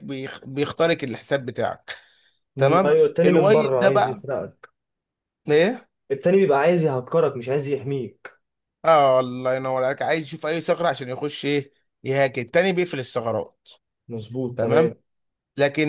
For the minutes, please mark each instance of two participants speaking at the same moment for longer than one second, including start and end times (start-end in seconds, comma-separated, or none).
2.6-4.2